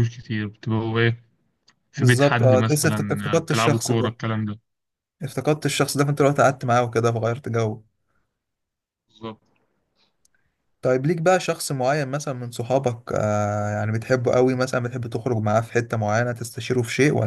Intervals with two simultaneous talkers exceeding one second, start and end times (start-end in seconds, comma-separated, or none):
2.0-4.1